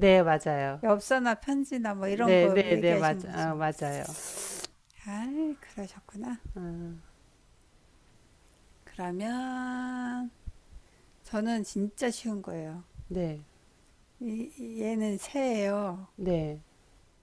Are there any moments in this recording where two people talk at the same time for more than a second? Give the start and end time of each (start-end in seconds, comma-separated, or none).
2.0-3.6